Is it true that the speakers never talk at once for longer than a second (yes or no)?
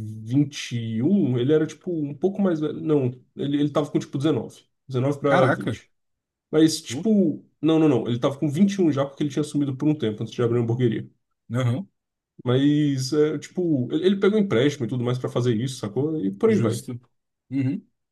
yes